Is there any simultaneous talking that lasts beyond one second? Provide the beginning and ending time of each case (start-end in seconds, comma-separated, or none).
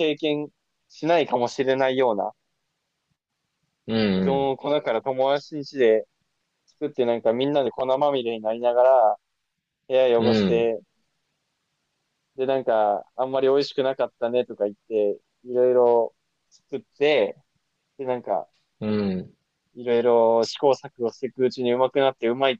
none